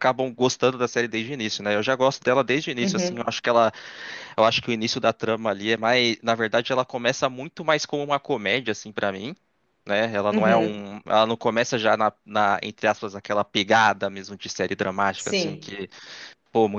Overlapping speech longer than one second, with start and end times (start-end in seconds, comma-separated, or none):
none